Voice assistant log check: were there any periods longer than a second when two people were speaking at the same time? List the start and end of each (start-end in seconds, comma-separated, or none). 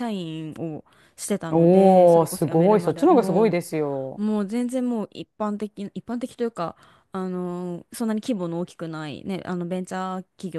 1.5-3.5